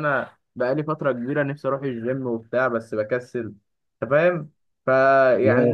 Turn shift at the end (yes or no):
no